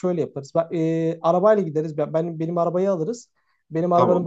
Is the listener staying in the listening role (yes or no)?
yes